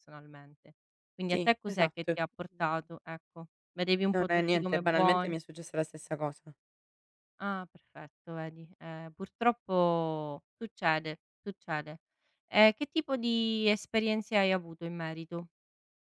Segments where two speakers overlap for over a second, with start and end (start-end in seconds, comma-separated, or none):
1.3-2.9, 4.1-5.3